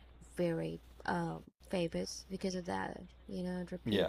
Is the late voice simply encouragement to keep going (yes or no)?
yes